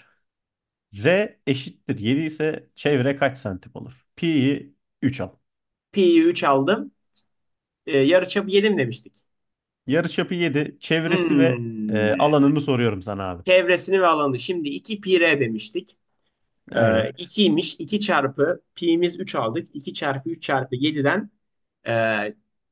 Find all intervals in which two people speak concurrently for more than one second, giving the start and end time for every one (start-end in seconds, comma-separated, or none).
11.0-12.5